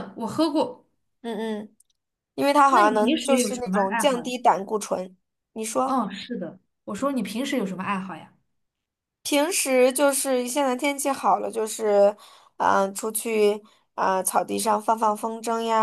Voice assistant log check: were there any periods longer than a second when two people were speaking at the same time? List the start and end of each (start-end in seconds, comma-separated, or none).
2.7-4.3